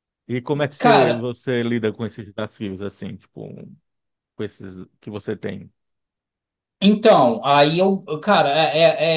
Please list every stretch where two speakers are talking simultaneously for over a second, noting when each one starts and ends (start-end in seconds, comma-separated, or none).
none